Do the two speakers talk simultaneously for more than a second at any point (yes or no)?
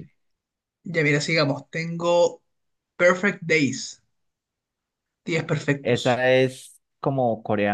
no